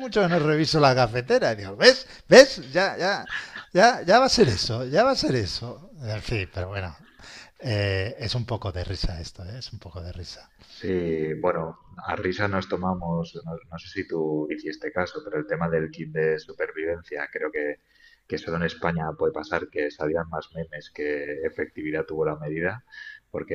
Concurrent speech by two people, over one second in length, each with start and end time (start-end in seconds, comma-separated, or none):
none